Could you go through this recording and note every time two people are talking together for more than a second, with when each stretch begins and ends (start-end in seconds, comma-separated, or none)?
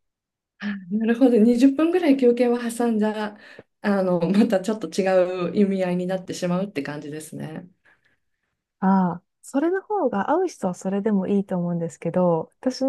none